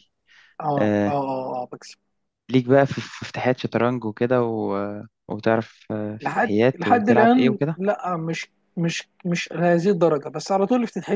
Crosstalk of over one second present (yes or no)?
yes